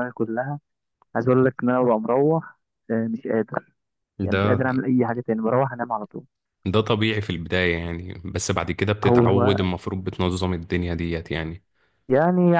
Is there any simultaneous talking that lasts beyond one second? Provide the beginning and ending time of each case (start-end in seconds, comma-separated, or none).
none